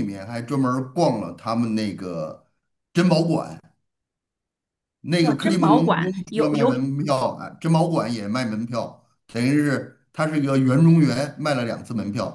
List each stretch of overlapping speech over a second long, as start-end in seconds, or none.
5.2-6.9